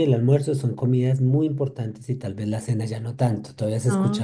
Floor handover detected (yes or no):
yes